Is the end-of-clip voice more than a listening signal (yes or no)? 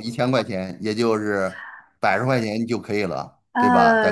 yes